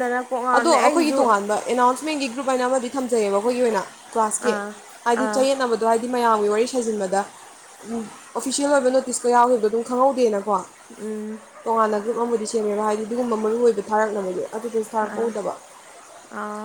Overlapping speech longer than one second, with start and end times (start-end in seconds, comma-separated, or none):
none